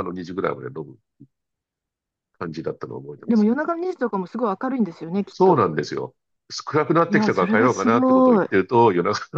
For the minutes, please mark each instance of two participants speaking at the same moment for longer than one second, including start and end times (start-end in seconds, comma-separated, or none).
7.1-8.5